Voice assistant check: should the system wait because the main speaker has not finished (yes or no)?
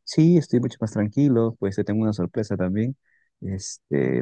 yes